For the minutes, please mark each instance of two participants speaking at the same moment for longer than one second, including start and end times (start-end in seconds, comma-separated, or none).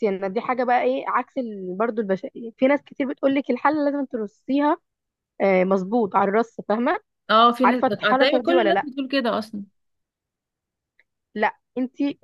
7.6-8.9